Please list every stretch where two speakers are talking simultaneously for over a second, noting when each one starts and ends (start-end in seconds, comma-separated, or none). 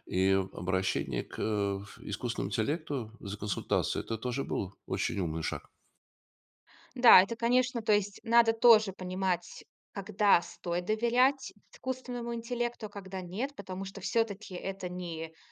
none